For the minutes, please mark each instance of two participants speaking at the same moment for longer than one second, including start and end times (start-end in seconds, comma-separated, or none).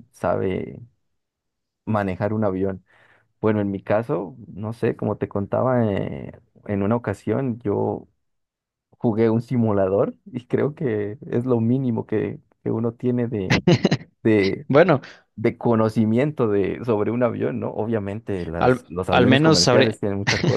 18.6-19.9